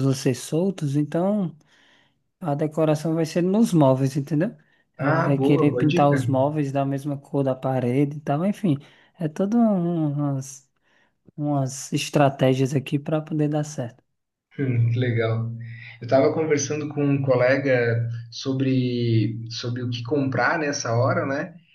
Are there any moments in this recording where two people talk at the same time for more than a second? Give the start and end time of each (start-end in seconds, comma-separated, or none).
5.0-6.2